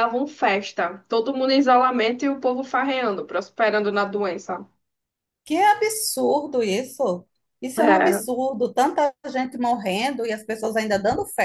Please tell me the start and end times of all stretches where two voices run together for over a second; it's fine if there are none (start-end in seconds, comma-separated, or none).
none